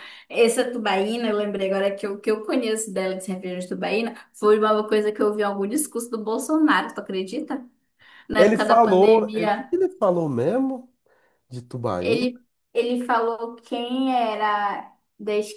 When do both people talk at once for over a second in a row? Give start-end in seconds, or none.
8.4-9.7